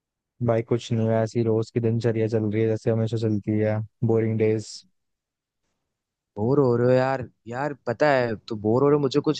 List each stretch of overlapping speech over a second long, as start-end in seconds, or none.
none